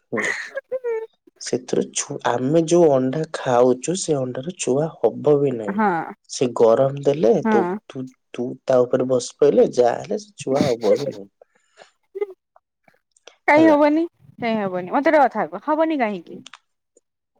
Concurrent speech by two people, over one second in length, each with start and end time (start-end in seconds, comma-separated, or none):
none